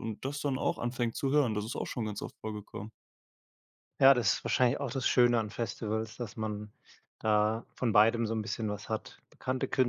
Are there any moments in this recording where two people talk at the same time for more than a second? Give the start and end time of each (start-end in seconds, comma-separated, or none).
none